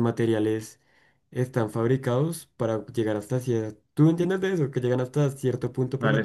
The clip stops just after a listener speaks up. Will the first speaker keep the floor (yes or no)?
yes